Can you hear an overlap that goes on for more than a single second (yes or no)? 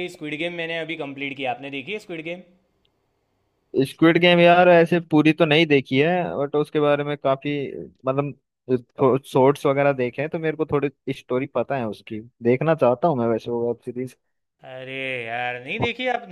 no